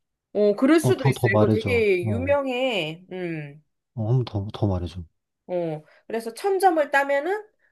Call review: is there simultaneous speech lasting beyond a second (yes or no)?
yes